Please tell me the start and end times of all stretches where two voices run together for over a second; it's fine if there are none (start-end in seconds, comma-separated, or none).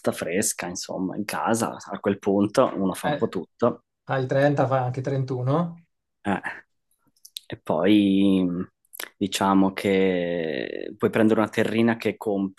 none